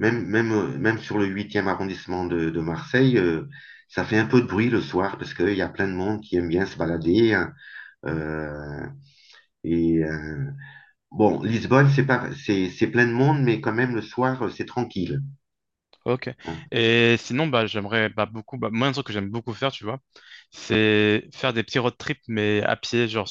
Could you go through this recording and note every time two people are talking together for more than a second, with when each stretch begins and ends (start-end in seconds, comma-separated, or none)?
none